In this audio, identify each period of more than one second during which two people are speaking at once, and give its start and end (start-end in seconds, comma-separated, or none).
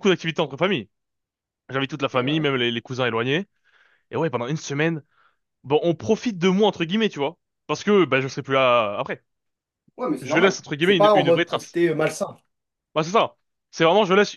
10.2-11.8